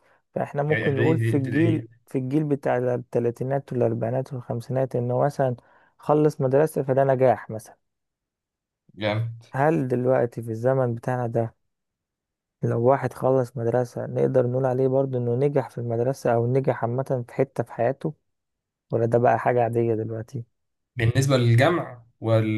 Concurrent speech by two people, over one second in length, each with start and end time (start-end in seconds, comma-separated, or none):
0.7-2.0